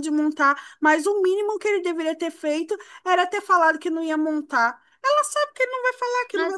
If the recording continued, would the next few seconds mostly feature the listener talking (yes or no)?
yes